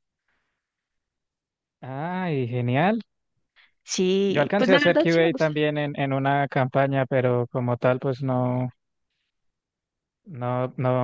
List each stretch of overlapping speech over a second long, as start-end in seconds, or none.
4.3-5.5